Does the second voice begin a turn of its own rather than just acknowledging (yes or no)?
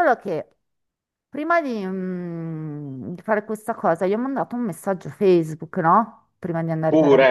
no